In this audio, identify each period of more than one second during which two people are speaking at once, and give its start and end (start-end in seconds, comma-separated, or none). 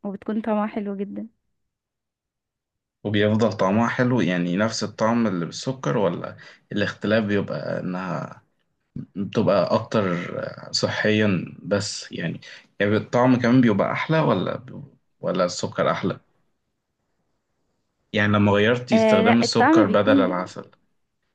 18.9-20.4